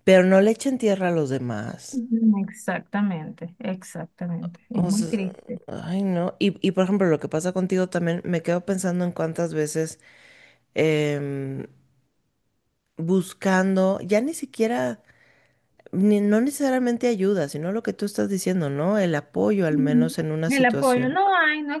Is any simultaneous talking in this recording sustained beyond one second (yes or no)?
yes